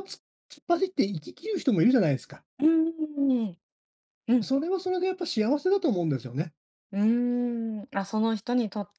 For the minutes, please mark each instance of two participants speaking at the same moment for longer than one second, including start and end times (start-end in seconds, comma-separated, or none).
none